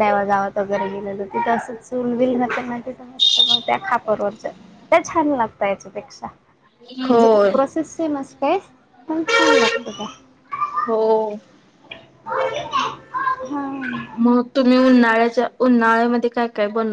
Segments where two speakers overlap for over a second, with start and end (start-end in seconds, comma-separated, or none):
none